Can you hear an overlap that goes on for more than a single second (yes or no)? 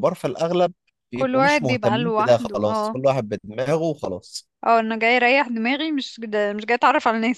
yes